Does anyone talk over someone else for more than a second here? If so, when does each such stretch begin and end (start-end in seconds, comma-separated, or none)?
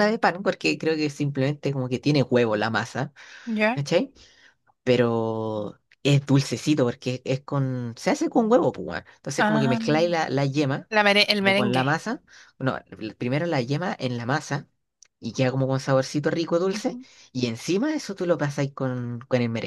none